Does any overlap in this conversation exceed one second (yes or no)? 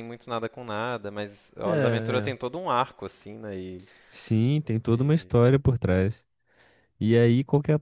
no